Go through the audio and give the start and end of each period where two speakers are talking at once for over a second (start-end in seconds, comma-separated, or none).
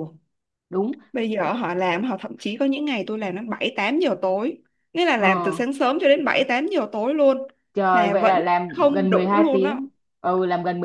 7.9-9.8